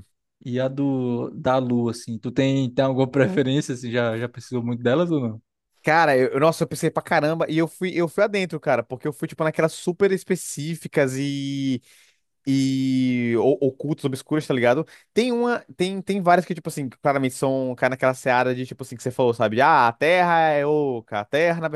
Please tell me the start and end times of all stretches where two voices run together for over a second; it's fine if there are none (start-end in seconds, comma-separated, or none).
none